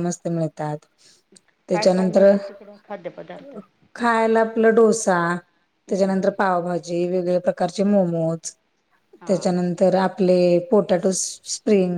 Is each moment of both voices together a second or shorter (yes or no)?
yes